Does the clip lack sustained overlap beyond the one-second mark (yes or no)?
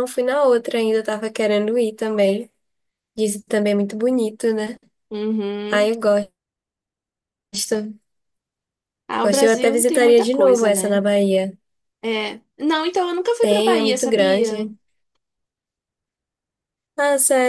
no